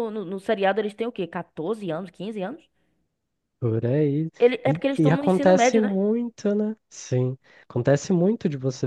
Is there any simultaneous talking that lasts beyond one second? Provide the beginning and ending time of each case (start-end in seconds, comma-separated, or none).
4.7-6.0